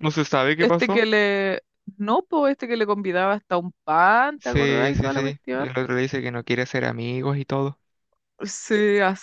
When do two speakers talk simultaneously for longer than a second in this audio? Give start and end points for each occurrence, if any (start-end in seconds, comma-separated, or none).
4.4-5.7